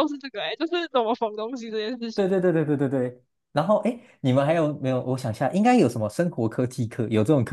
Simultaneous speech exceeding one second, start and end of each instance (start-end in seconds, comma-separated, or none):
none